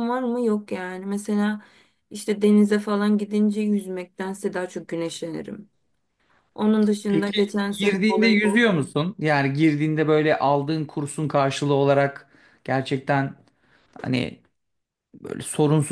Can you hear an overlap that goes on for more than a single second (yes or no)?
yes